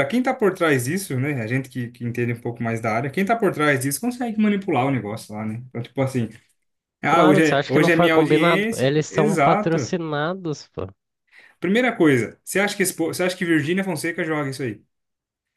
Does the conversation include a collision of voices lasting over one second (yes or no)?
yes